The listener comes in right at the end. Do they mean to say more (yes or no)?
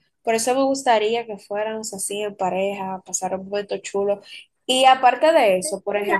yes